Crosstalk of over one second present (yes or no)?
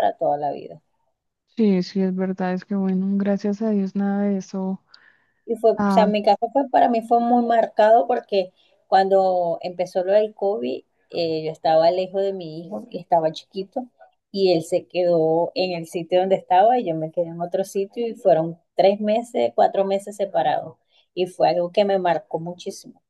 no